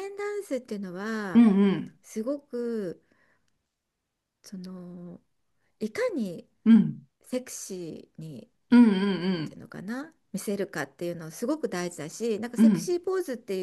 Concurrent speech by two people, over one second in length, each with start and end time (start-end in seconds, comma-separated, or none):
none